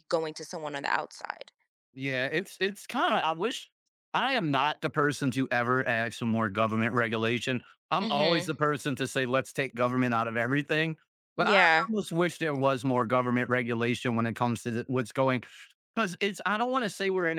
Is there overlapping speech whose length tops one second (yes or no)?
no